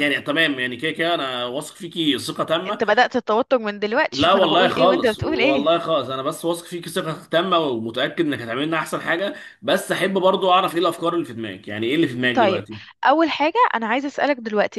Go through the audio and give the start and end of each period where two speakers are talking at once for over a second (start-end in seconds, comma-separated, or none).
4.1-5.7